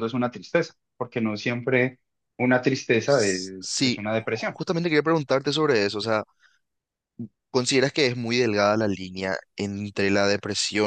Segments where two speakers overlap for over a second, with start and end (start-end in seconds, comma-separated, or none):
3.0-4.6